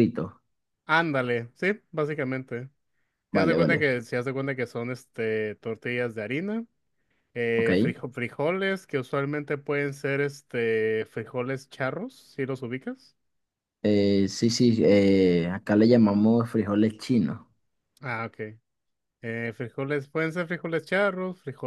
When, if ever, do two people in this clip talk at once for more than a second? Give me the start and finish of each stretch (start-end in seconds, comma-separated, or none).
none